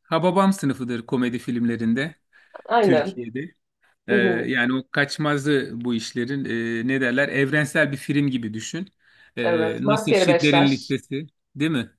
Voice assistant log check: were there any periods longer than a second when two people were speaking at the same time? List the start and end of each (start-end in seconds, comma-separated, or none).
9.4-10.9